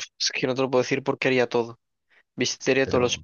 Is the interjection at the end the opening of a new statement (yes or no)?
no